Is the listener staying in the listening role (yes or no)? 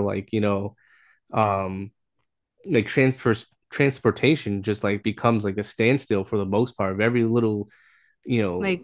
yes